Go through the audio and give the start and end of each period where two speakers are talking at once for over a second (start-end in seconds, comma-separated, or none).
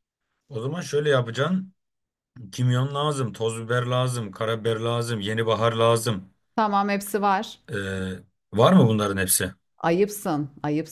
none